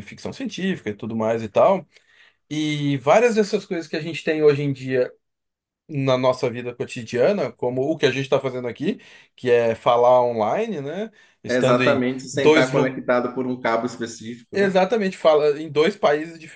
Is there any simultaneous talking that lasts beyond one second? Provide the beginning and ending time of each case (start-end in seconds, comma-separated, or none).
11.5-13.0